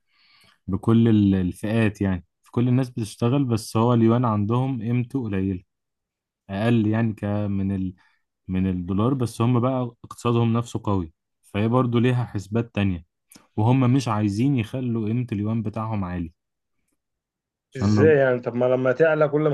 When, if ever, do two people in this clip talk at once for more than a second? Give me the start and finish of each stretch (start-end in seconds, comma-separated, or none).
none